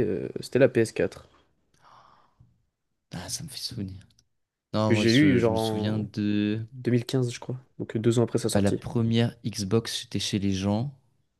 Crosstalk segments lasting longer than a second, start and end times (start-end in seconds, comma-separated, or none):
4.8-6.1